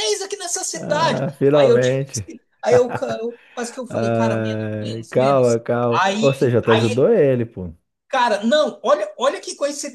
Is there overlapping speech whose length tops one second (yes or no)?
yes